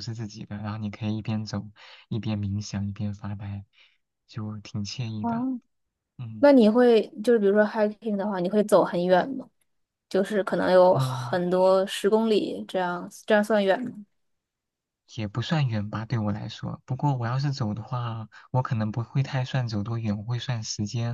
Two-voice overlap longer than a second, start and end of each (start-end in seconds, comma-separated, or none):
none